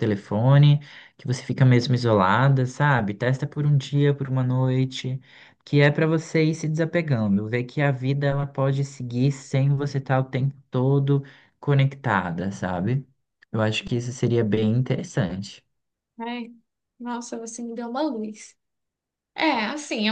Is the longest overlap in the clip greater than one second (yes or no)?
no